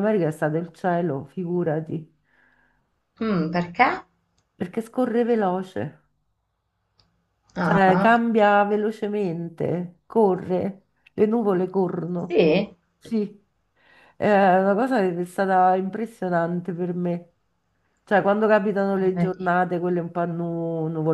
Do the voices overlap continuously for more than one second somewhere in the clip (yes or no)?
no